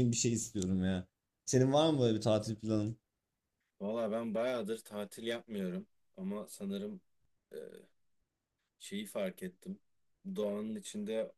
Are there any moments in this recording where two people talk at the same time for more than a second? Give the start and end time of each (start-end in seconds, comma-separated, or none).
none